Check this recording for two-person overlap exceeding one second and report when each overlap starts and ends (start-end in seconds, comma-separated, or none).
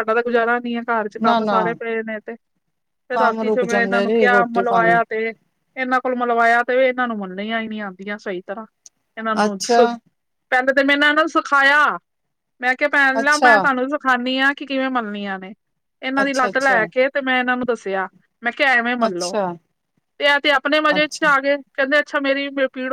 3.1-5.0